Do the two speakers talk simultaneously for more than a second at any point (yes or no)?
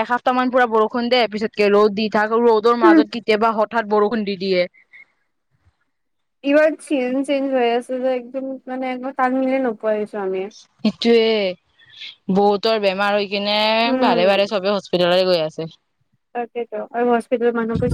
no